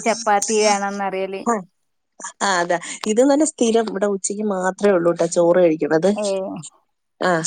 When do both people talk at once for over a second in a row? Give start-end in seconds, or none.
none